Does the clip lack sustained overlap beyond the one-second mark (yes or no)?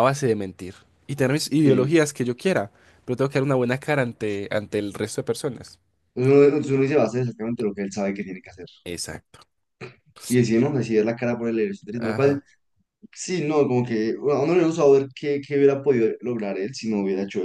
yes